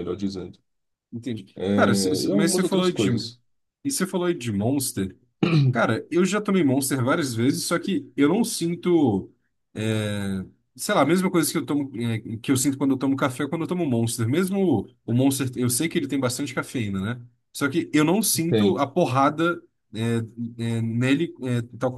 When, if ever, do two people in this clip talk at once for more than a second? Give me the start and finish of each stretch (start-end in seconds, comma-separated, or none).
1.6-3.1